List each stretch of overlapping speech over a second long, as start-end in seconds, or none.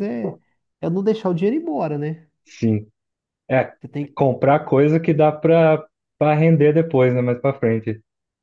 none